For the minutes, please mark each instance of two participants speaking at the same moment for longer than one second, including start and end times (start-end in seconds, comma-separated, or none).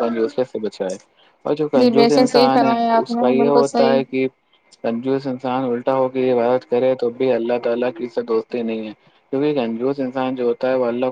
1.8-4.0